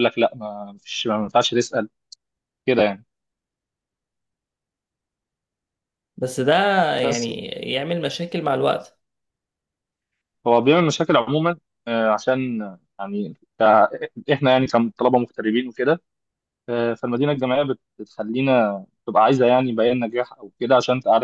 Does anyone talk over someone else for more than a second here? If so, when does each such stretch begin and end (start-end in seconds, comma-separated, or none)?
none